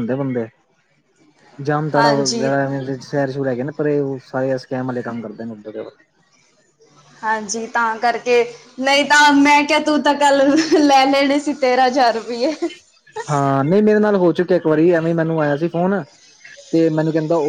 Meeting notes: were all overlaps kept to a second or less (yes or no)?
yes